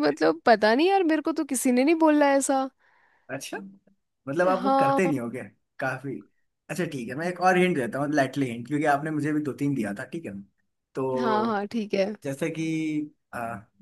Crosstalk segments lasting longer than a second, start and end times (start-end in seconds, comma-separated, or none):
none